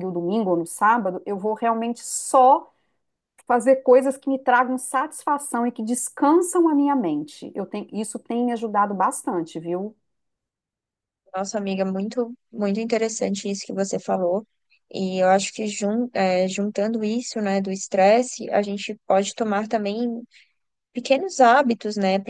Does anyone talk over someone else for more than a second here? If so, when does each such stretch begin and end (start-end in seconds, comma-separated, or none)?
none